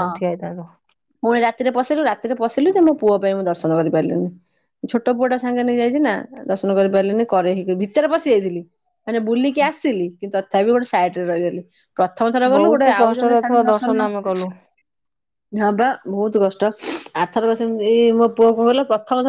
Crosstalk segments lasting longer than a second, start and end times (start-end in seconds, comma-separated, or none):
12.6-14.1